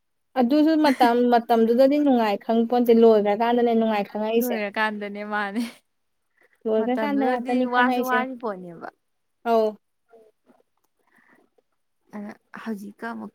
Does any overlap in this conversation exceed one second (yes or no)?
yes